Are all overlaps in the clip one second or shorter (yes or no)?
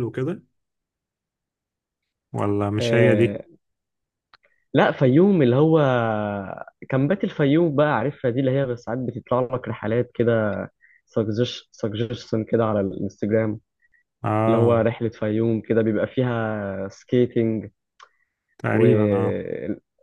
yes